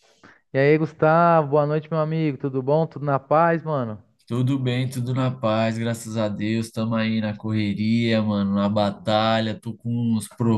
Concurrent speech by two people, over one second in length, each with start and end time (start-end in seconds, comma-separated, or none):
none